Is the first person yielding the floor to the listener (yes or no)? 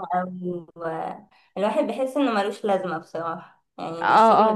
yes